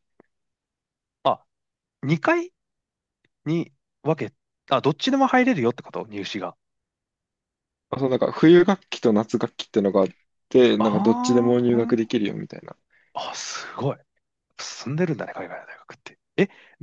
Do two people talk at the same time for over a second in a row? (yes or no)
yes